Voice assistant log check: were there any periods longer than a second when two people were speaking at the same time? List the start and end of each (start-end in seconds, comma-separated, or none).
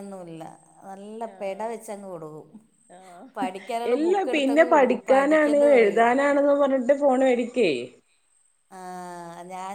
3.9-6.1